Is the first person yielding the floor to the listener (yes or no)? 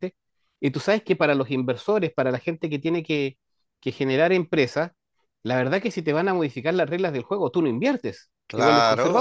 yes